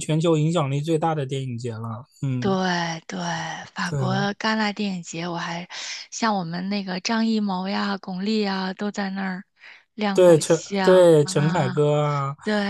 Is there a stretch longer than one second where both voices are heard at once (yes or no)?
yes